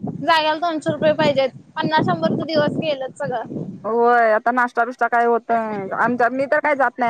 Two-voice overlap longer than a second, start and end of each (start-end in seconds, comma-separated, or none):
none